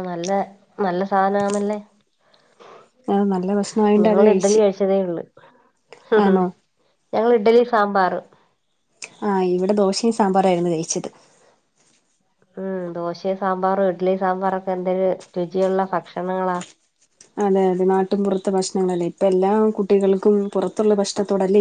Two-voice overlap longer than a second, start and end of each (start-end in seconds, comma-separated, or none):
none